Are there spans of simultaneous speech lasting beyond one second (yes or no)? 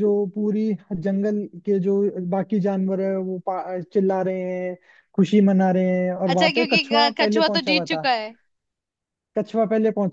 yes